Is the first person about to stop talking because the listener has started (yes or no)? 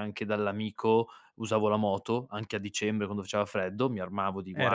yes